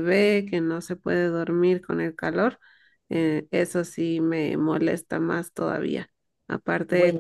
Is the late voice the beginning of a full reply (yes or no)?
no